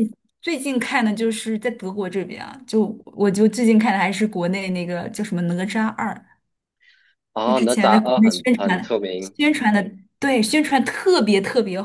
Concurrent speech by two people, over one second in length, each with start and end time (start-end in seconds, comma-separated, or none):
7.5-9.3